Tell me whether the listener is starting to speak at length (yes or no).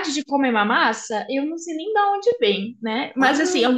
no